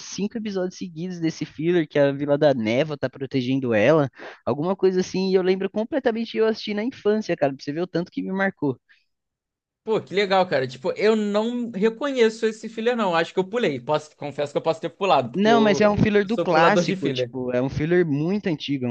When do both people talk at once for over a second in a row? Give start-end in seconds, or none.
15.3-17.3